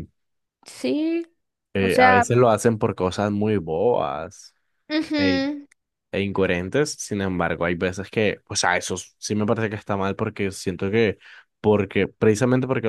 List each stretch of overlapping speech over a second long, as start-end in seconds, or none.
none